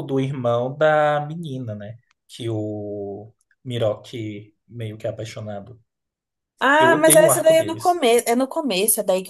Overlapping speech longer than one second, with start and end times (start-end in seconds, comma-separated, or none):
6.8-8.0